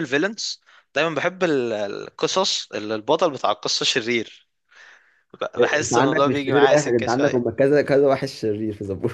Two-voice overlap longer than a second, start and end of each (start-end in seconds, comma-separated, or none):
5.8-7.4